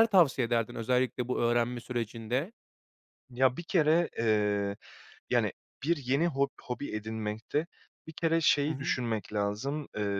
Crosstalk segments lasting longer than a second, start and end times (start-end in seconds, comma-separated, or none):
none